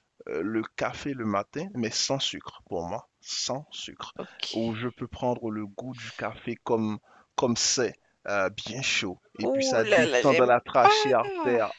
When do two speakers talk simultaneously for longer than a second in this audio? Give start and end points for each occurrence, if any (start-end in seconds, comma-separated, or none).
9.4-10.9